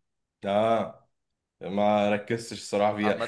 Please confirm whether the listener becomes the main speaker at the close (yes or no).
no